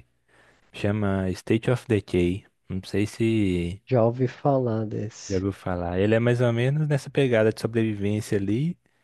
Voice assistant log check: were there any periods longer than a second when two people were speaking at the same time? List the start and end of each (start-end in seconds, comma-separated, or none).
none